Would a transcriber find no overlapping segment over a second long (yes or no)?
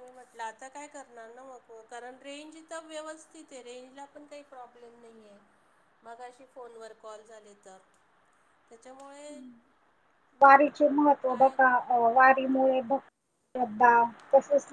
yes